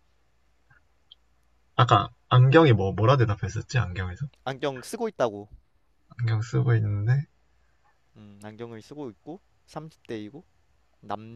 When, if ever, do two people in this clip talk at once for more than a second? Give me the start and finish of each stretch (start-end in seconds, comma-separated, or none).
none